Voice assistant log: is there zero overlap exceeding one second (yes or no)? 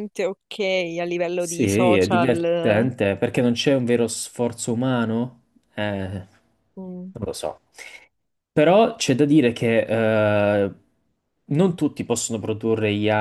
no